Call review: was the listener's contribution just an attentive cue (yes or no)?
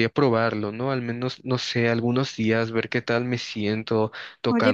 no